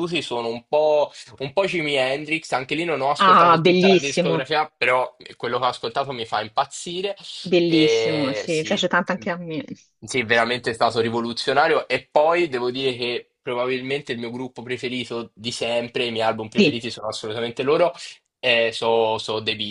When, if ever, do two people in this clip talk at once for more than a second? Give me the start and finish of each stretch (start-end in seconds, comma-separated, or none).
3.2-4.5, 7.7-8.9